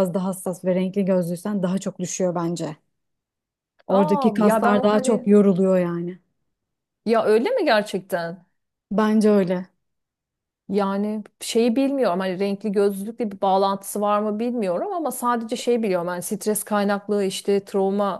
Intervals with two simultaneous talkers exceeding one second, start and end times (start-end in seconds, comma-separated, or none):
3.9-5.3